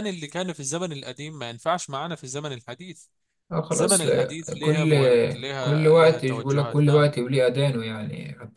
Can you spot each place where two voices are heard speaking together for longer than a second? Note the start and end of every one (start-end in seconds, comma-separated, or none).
3.7-4.9, 5.6-7.1